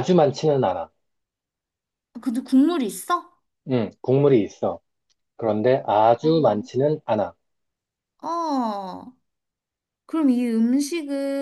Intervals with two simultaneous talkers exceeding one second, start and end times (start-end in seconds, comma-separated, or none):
none